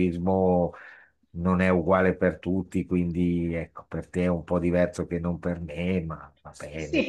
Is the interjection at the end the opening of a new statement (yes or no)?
yes